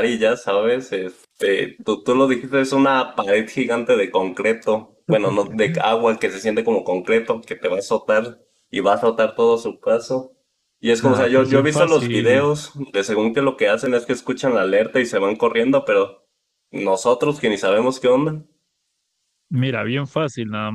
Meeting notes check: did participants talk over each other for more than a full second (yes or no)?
yes